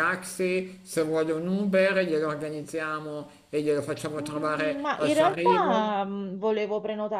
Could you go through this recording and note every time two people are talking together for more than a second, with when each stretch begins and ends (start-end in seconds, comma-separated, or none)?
4.2-5.9